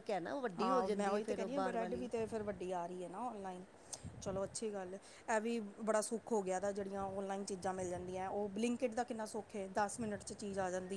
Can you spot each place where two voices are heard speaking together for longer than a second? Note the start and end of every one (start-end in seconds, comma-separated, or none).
0.6-2.1